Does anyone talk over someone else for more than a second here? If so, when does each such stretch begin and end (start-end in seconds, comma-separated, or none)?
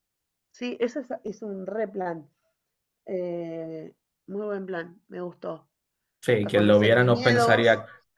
6.4-7.7